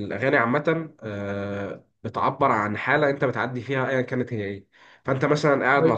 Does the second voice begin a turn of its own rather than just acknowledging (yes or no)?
no